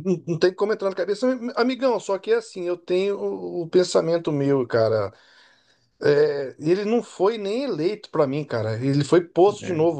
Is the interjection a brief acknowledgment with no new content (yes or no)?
yes